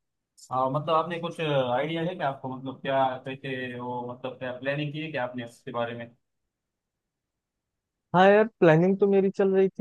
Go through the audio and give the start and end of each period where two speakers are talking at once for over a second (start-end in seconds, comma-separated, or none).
none